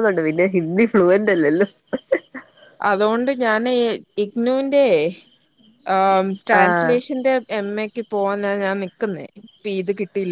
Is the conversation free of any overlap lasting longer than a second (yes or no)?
yes